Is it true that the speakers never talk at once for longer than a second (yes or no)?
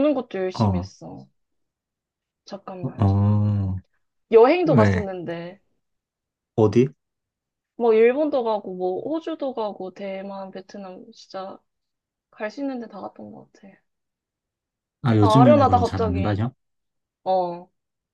no